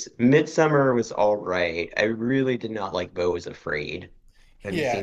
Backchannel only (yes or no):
no